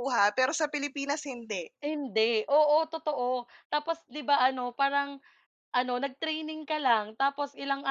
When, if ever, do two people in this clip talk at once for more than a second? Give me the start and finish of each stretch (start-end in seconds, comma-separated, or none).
none